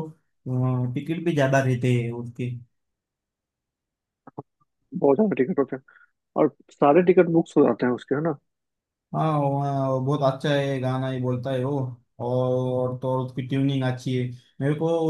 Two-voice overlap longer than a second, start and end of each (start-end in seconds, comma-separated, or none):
none